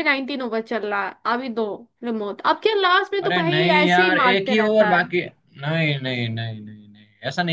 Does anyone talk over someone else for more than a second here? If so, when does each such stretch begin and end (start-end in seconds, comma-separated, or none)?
3.2-5.0